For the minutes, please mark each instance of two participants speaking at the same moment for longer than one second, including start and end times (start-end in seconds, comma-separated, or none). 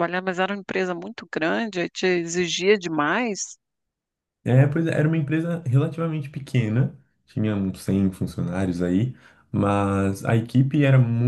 none